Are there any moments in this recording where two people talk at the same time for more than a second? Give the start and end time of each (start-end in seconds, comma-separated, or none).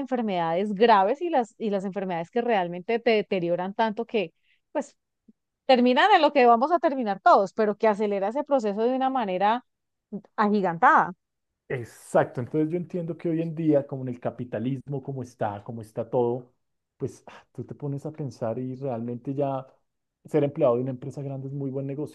none